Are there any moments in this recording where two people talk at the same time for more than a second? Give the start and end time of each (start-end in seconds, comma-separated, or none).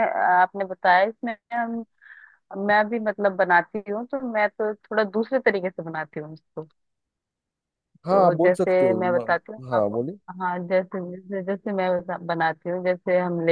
8.1-10.0